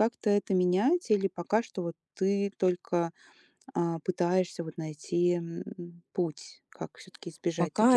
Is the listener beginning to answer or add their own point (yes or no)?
yes